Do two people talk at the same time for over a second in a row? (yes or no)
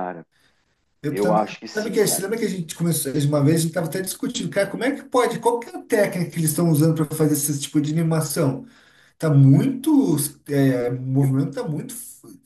yes